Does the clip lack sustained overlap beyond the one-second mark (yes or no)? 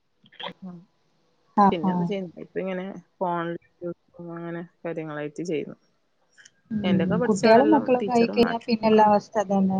no